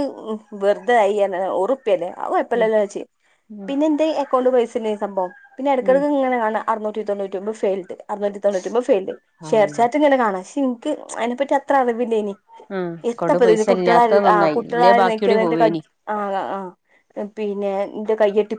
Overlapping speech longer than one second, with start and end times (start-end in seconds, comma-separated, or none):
13.1-15.8